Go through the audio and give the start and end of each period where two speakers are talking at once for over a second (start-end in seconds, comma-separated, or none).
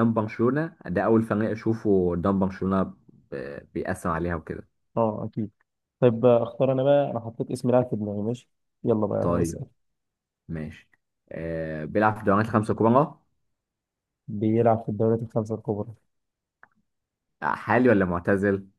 none